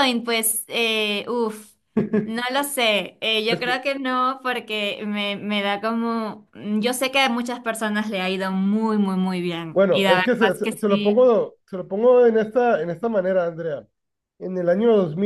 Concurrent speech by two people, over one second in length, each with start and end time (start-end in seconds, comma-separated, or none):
9.7-11.3